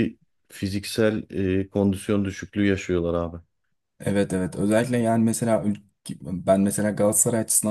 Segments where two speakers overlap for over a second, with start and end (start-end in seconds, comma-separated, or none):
none